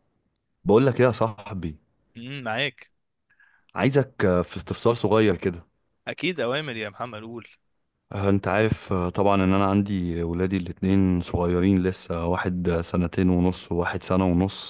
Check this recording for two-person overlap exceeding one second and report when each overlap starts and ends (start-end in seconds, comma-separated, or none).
none